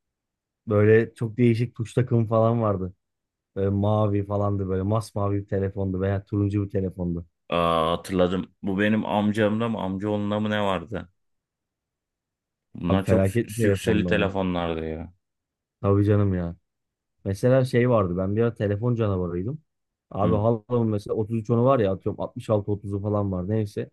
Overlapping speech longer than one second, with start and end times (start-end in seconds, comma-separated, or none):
12.9-14.3